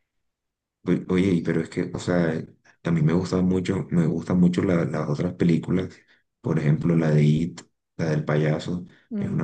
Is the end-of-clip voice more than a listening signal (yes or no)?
no